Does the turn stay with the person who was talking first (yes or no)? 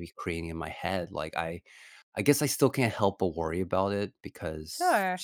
yes